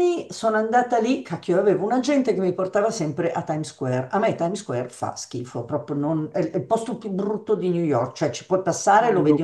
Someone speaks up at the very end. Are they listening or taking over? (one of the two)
listening